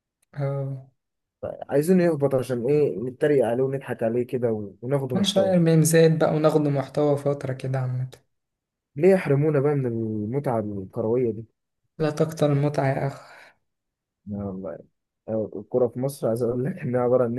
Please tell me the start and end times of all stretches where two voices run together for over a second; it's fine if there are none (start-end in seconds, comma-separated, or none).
none